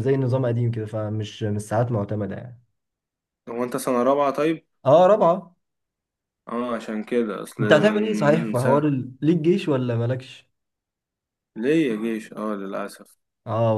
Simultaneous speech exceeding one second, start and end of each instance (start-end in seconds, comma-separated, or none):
7.6-8.8